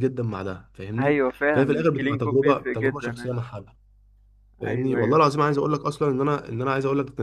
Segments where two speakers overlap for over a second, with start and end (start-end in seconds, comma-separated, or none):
1.0-3.3